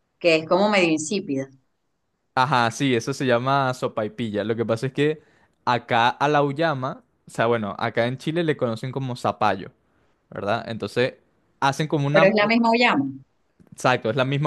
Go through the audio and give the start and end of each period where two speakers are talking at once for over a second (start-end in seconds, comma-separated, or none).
none